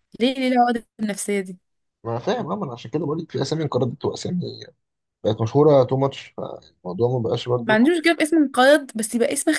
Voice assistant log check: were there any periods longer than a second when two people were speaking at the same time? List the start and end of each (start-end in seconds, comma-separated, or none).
none